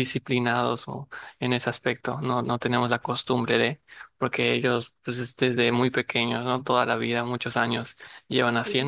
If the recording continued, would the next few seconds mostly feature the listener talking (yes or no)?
no